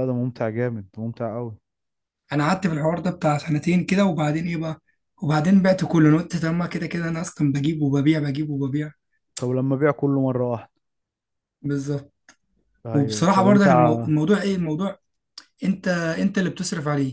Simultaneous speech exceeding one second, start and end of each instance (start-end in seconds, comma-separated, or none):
12.9-14.1